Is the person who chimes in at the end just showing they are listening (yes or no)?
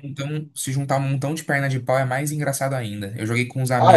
yes